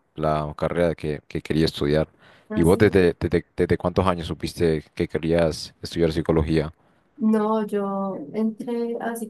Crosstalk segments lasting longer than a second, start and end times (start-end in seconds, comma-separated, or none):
none